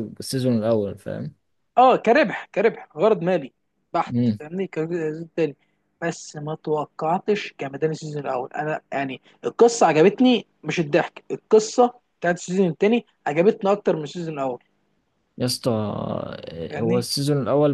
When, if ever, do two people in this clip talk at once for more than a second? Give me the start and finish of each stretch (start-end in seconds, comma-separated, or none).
none